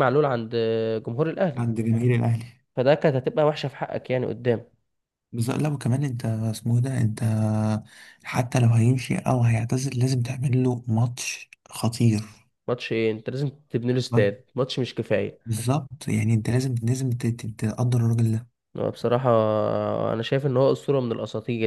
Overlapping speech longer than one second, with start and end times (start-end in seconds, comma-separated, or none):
none